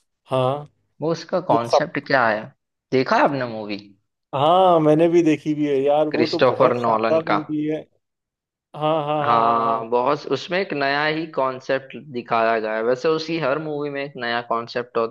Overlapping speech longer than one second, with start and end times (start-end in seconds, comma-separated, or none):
6.1-7.4